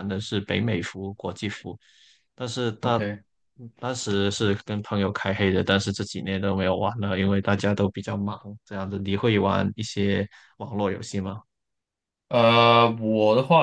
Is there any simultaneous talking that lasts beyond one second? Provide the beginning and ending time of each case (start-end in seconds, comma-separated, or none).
none